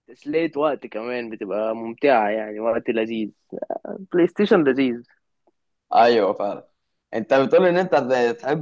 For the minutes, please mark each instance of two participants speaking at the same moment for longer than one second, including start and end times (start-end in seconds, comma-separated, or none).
none